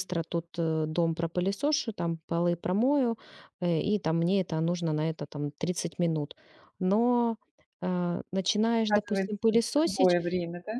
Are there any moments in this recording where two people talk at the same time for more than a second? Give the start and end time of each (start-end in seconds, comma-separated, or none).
8.9-10.2